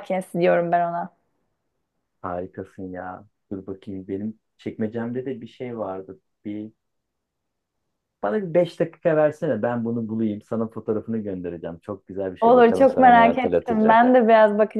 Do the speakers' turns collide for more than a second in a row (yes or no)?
yes